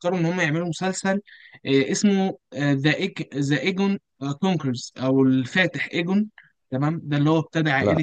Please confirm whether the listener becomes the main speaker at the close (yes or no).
no